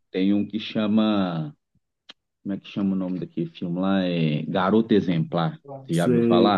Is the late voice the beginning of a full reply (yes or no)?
yes